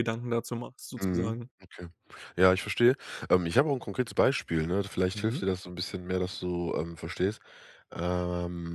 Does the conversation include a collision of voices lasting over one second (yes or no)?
no